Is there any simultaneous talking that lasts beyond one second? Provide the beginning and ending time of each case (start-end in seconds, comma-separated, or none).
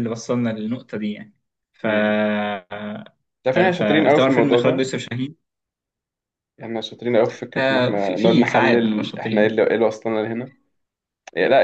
3.5-4.9, 7.6-9.6